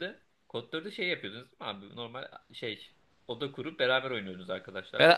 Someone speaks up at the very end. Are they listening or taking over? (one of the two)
taking over